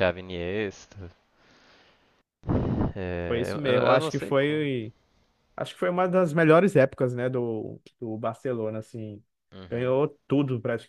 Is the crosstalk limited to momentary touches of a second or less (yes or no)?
no